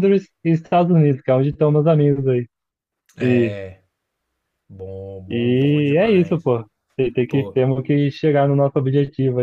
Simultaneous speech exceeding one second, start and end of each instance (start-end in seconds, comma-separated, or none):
5.3-6.5